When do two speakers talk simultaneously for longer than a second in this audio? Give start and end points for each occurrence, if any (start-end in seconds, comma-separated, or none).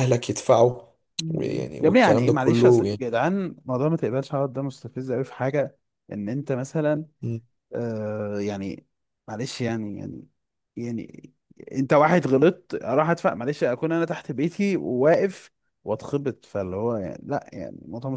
1.8-3.0